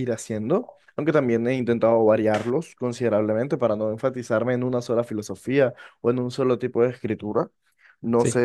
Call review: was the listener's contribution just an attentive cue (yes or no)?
yes